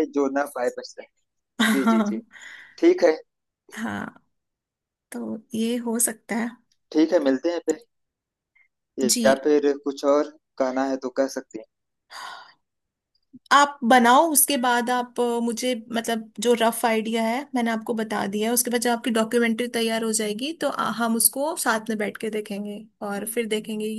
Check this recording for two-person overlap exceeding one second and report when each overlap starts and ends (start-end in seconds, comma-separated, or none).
none